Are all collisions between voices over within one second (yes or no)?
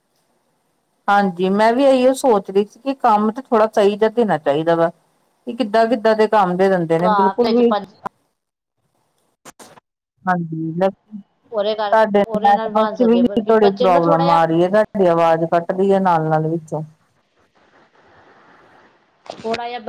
no